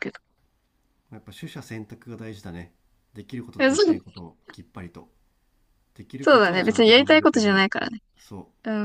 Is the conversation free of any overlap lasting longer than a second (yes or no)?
no